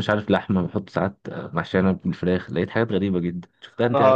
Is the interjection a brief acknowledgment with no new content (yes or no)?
no